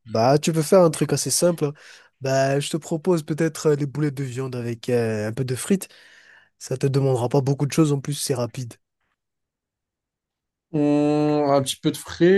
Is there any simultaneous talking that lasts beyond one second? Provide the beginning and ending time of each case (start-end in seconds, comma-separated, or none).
none